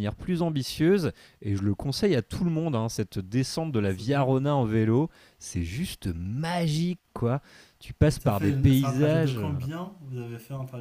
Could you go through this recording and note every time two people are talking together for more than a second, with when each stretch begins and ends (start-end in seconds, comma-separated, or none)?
8.1-9.5